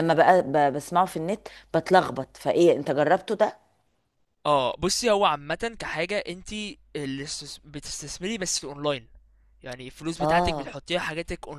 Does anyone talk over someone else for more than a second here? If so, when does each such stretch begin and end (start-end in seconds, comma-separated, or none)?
none